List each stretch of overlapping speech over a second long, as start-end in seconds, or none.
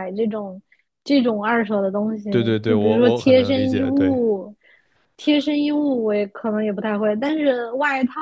2.3-4.2